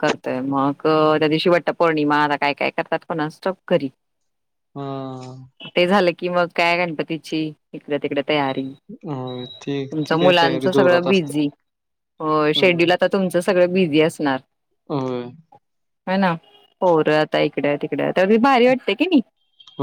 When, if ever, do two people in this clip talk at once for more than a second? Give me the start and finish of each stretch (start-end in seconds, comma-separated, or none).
9.9-11.4